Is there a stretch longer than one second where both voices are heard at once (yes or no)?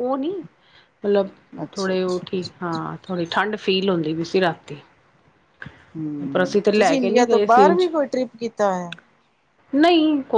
yes